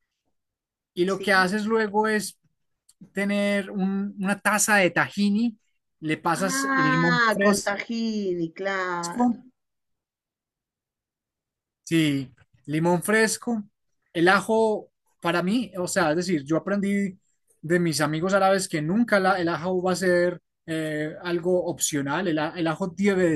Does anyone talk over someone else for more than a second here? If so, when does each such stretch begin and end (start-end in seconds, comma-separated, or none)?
6.4-7.7